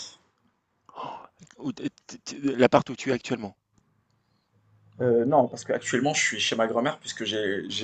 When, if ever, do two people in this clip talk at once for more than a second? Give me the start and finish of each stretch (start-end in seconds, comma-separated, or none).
none